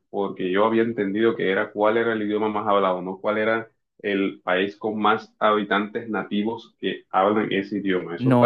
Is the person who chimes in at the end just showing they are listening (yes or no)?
no